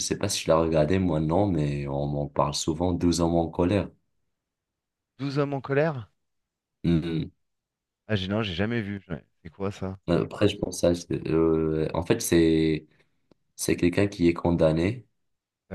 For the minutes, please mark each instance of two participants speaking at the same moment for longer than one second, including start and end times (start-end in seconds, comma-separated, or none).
none